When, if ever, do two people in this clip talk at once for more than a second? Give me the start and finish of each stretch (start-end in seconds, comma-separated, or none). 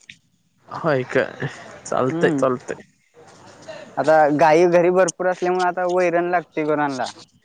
none